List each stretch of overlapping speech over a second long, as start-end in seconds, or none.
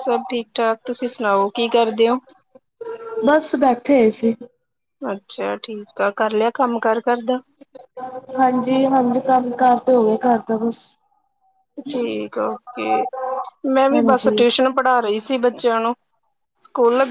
none